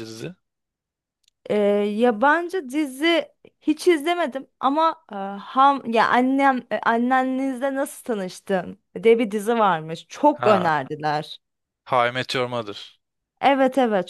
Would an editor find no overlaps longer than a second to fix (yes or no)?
yes